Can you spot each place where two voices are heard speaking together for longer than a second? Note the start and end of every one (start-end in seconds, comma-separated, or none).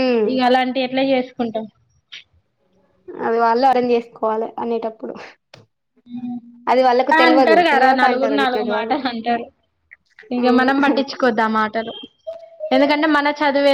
7.2-8.9